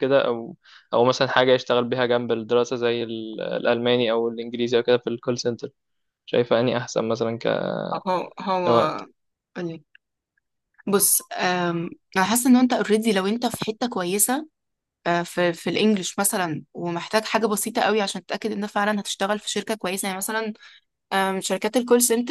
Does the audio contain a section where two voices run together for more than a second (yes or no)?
no